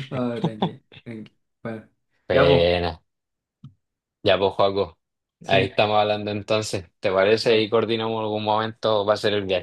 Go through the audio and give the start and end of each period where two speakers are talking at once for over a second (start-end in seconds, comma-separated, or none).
none